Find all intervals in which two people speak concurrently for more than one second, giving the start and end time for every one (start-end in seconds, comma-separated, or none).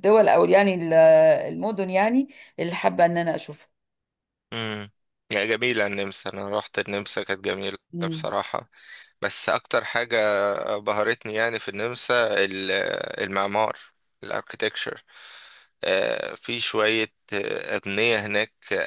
none